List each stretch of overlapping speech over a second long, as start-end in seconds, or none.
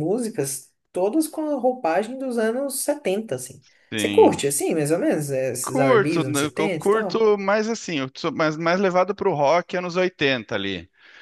5.6-7.3